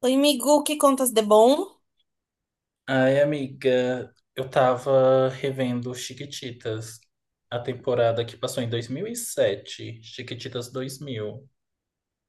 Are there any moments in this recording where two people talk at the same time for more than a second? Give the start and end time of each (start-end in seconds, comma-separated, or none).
none